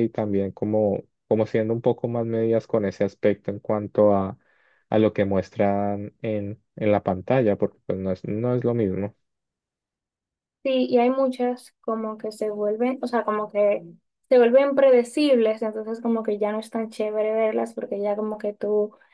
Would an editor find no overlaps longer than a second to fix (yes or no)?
yes